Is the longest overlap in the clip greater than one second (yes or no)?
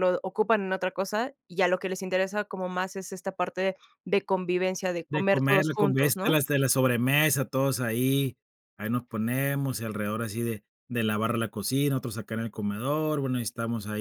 yes